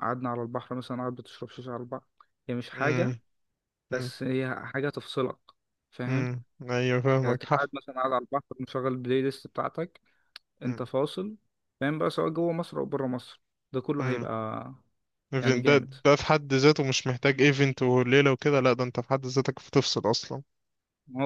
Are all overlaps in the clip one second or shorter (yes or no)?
yes